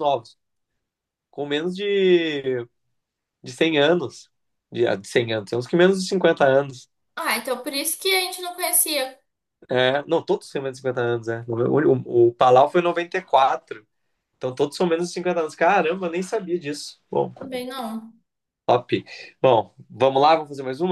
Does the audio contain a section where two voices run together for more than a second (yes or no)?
no